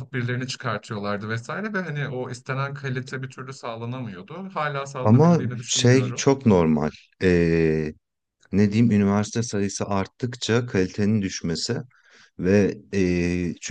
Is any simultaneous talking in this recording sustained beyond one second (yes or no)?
yes